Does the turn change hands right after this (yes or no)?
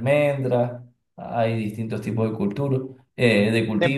no